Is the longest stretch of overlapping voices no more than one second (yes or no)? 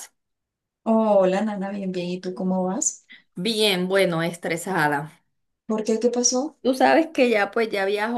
yes